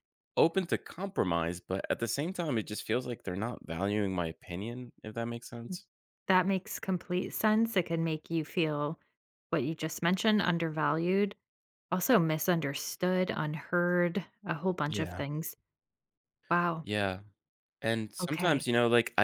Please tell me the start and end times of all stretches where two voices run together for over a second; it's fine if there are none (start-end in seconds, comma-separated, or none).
none